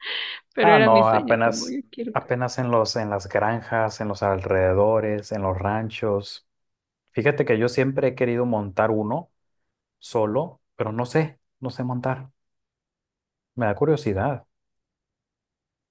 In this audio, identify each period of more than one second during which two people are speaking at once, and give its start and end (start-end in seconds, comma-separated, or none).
0.6-2.4